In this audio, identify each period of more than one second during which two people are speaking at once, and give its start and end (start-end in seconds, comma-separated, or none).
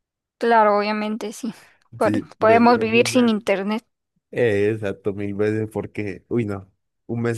2.0-3.3